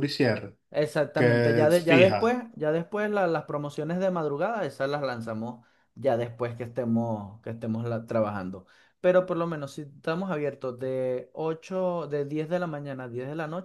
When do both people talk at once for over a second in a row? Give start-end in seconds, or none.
1.1-2.4